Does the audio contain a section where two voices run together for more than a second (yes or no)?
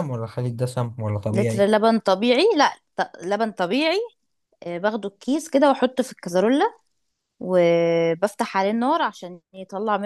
no